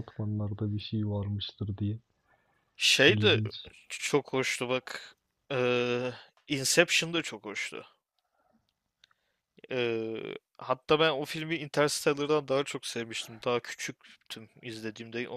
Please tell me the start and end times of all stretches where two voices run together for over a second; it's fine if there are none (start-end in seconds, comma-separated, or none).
none